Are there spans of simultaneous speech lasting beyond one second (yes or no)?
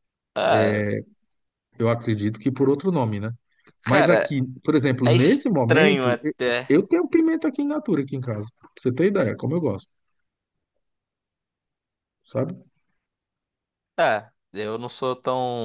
yes